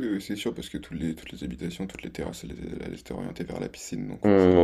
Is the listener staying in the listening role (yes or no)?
no